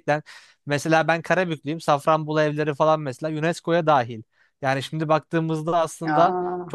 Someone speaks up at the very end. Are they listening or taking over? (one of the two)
listening